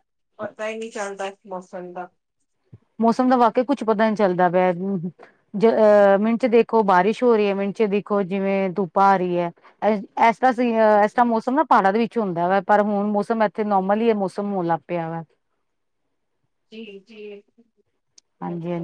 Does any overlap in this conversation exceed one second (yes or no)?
no